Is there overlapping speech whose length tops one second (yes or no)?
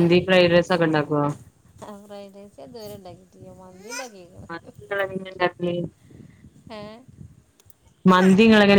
no